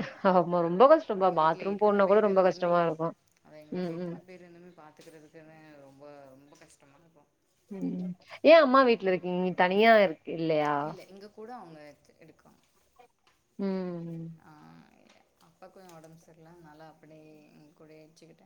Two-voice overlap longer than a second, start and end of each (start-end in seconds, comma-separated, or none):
1.2-2.8